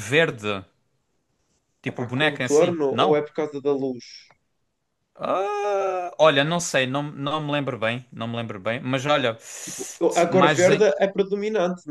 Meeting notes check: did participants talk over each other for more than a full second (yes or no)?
yes